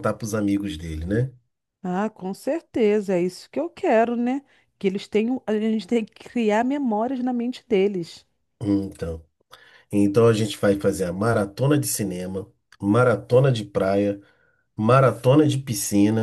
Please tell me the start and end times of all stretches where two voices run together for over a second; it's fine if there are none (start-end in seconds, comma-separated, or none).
none